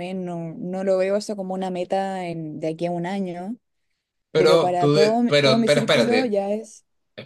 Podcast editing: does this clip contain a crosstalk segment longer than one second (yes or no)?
yes